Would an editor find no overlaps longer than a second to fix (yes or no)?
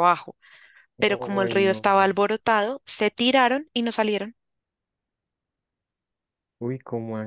no